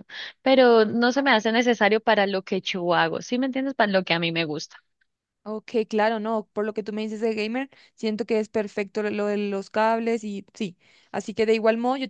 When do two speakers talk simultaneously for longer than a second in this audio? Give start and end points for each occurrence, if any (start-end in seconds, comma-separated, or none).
none